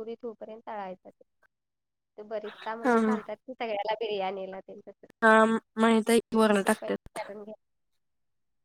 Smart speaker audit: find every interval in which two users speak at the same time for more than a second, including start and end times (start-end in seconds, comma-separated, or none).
none